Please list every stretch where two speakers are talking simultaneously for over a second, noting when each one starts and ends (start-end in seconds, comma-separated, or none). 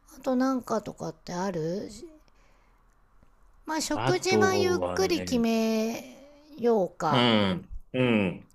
3.9-5.4